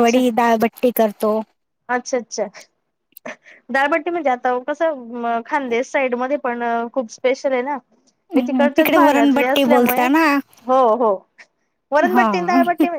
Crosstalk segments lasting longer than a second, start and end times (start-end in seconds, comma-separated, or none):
8.3-10.1